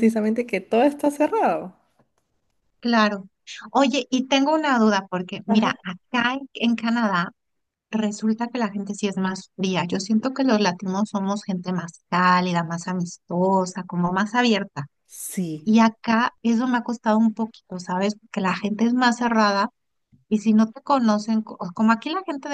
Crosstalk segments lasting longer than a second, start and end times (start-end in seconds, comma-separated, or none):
none